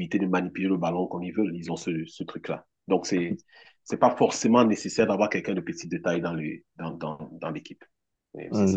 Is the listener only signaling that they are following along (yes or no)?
no